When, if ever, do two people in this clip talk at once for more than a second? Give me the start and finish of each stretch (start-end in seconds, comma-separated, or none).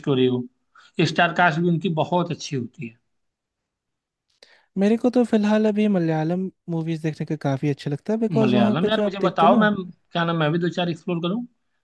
8.4-9.7